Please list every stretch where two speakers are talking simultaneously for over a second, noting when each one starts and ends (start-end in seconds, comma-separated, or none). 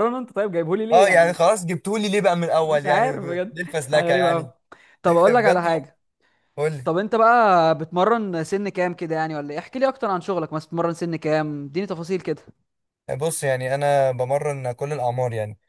2.6-4.5